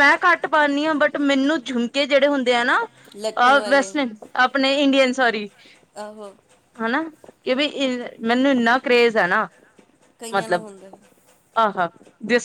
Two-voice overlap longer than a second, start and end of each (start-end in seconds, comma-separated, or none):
none